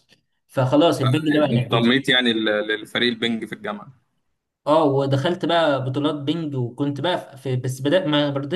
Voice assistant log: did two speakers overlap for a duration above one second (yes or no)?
no